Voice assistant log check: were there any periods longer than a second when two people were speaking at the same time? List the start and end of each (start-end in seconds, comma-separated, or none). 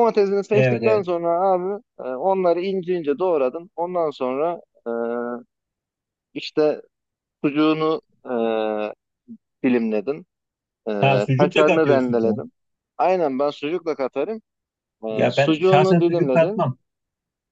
11.0-12.4, 15.1-16.6